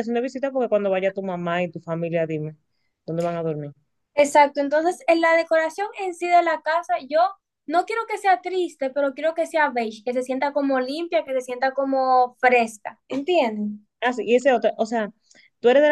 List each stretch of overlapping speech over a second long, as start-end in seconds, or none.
none